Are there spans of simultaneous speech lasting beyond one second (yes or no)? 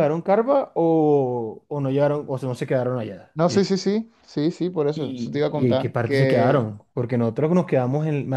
yes